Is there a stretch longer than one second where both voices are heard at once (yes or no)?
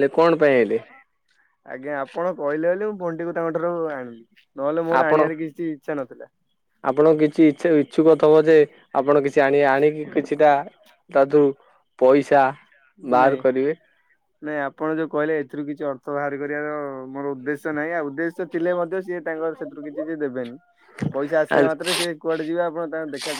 no